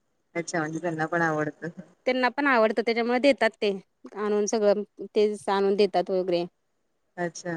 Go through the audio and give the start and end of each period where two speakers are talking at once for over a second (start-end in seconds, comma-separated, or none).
none